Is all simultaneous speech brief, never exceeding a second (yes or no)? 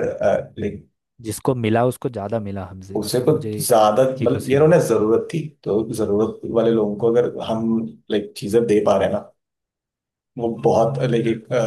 no